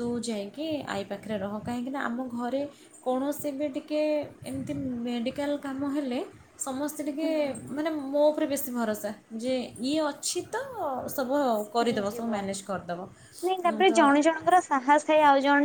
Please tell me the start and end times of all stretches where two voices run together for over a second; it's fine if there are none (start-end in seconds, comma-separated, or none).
none